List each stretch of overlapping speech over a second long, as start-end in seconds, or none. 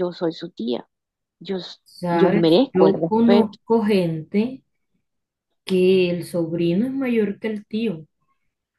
1.8-3.6